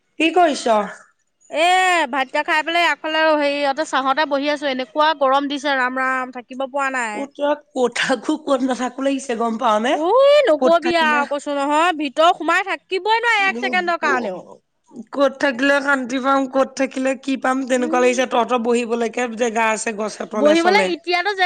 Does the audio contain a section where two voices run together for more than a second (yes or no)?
no